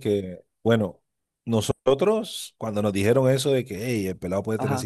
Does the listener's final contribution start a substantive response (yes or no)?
no